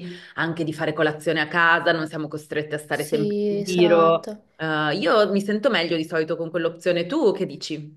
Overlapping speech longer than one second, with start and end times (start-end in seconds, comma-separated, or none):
2.9-4.4